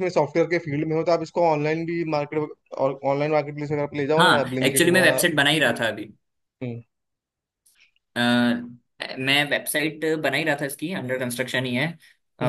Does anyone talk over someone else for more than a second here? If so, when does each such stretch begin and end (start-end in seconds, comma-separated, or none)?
4.2-5.8